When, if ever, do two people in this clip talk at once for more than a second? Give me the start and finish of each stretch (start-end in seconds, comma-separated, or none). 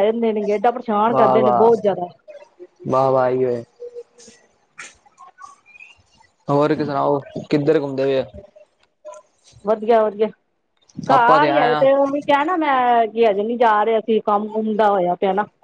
none